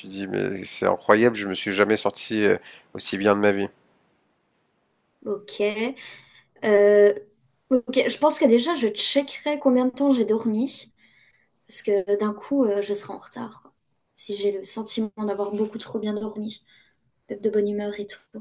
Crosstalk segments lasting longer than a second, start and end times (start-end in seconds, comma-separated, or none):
none